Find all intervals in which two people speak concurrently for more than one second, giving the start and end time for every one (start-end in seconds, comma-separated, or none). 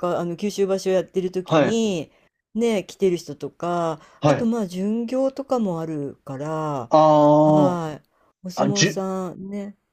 none